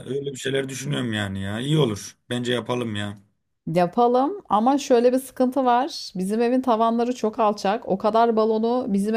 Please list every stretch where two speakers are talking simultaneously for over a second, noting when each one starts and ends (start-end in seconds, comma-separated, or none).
none